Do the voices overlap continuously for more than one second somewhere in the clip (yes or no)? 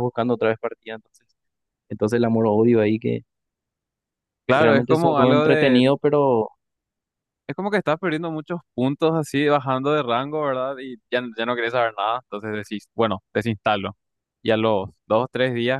yes